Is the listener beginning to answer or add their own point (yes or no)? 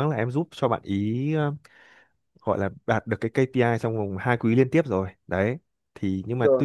no